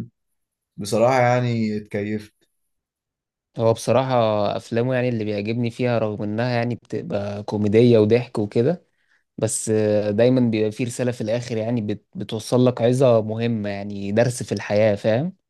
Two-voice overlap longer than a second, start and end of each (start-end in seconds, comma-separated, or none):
none